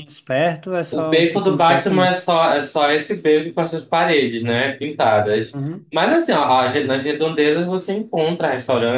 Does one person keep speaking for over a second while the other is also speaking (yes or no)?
yes